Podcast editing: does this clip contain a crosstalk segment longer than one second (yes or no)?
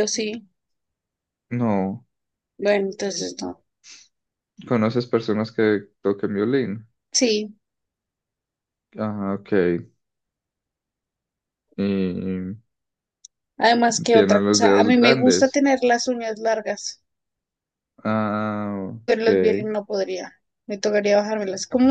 yes